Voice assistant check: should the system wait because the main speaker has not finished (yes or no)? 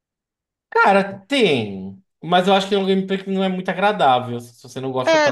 no